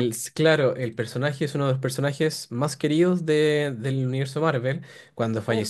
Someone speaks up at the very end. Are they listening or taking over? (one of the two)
listening